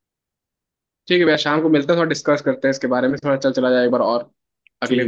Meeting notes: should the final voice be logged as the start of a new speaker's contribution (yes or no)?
yes